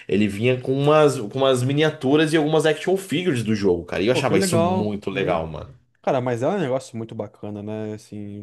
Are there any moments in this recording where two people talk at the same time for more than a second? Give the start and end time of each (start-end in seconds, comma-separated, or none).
4.1-5.4